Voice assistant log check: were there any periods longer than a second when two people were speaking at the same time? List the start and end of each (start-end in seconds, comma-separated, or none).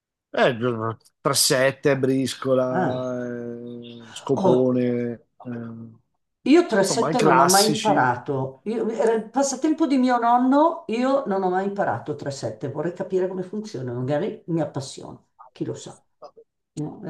6.8-8.1